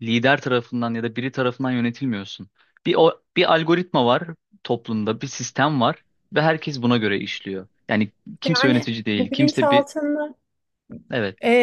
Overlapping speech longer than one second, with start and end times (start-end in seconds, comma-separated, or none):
8.4-9.9